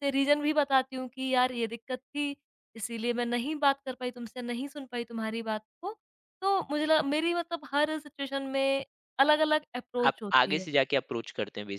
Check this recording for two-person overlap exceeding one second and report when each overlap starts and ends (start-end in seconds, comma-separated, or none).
none